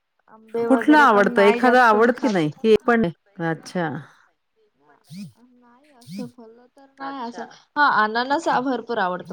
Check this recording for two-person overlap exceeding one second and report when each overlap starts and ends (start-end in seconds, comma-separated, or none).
0.7-2.3